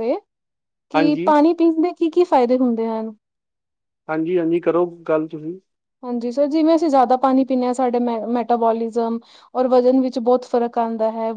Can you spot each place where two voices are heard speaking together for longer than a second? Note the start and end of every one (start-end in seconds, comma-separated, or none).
none